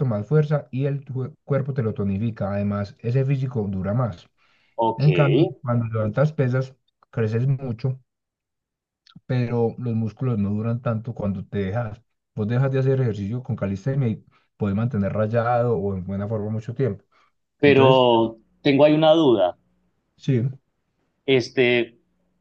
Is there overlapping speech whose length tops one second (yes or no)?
no